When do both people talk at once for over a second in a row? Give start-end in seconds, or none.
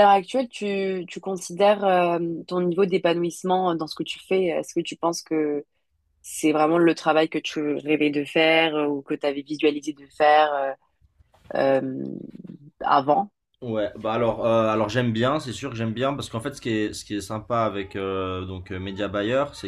none